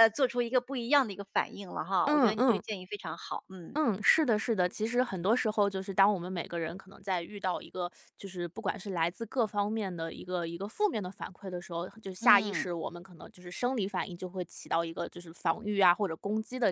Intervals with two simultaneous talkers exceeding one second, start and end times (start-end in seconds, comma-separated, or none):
none